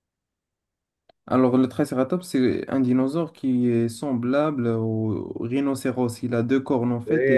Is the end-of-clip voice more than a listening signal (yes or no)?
yes